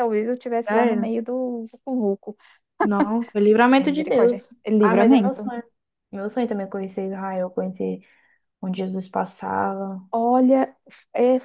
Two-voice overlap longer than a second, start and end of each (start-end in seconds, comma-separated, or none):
3.8-5.4